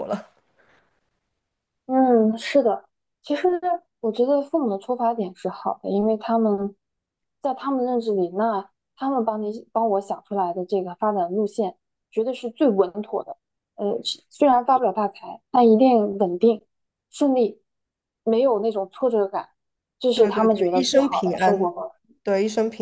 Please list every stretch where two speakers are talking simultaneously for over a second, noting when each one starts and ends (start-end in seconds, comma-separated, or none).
20.1-21.7